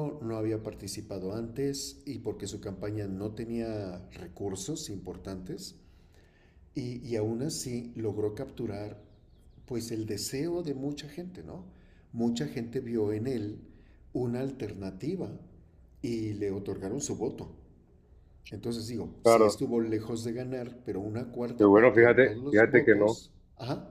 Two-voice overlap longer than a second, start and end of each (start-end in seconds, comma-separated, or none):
21.6-23.2